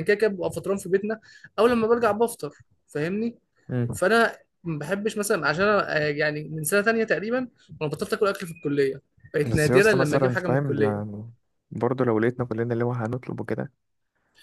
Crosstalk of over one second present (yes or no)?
yes